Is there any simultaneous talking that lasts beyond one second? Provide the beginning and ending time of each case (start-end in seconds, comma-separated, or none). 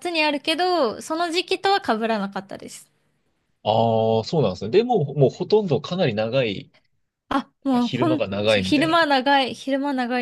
7.8-9.2